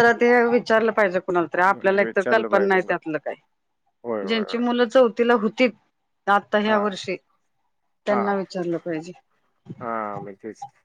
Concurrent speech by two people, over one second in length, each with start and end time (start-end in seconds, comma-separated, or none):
1.5-2.9